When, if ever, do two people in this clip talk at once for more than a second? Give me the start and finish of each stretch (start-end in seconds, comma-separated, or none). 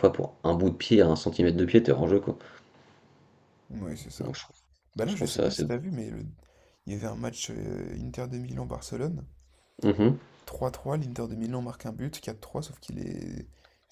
none